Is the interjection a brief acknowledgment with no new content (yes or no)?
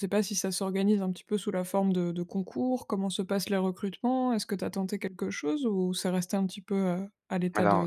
no